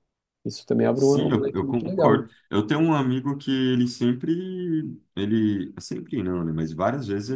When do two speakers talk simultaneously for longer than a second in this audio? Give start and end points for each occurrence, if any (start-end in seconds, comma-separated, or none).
0.9-2.2